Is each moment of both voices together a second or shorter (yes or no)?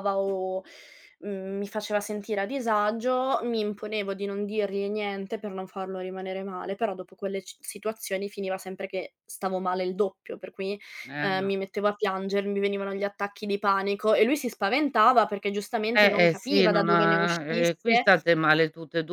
no